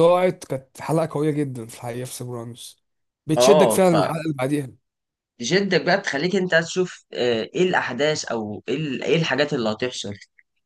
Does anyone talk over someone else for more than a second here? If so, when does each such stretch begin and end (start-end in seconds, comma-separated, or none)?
none